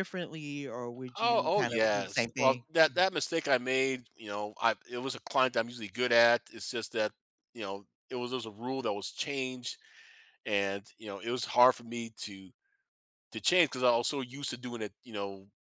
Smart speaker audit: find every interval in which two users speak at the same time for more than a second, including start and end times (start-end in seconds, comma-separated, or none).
1.2-3.0